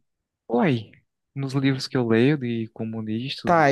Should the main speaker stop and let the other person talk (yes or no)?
yes